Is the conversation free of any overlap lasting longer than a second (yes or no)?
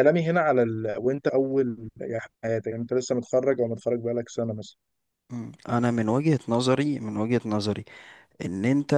yes